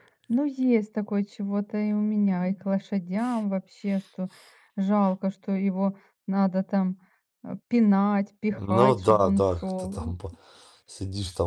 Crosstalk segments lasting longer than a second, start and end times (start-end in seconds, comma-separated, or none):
8.5-10.1